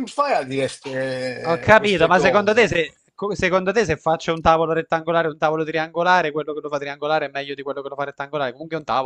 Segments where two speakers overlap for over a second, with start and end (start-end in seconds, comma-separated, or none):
1.5-2.8